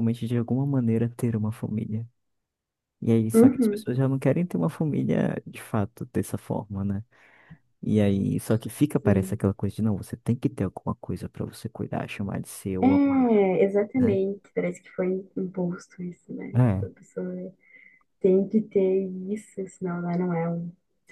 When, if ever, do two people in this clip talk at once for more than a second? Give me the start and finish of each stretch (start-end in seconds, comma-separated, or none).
none